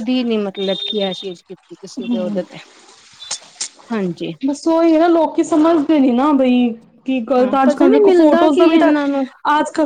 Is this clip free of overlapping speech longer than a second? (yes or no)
no